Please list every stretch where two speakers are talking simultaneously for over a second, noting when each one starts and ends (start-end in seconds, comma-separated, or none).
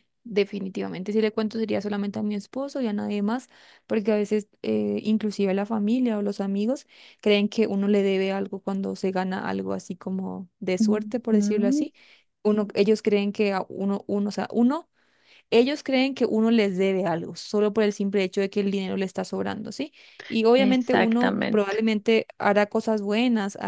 20.6-21.8